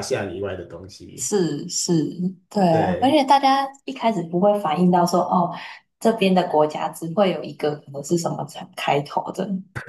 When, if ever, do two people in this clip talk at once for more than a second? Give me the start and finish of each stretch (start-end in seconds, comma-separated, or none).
none